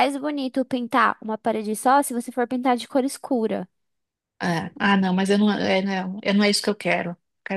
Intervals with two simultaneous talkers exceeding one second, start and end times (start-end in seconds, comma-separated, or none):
none